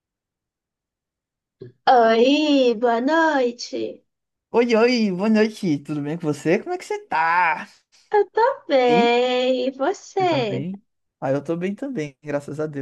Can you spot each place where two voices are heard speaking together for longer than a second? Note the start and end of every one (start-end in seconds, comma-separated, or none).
none